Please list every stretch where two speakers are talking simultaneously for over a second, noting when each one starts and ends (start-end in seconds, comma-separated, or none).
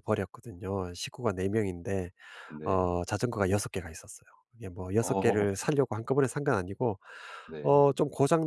none